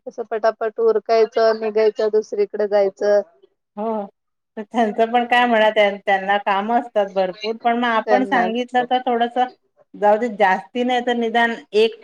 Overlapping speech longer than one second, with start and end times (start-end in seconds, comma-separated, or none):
none